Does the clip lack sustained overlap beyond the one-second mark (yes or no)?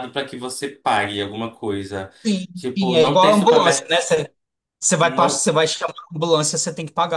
no